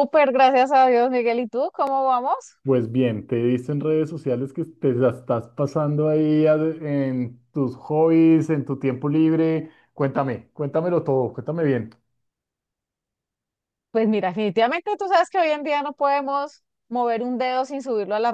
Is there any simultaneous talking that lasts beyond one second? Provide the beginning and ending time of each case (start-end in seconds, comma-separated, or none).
none